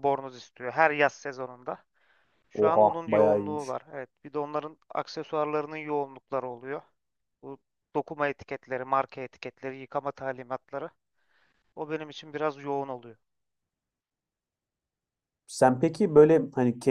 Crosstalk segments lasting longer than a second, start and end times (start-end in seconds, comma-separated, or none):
2.5-3.8